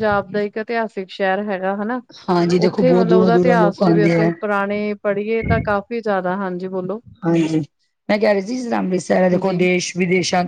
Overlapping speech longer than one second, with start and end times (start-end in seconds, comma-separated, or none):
2.7-4.3